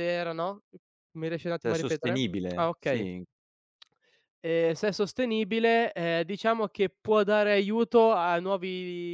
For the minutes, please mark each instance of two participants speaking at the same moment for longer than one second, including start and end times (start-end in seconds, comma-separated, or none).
1.6-3.1